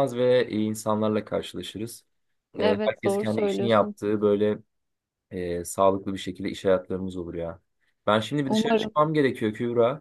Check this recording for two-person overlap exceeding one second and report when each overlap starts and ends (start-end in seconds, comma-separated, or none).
2.6-4.0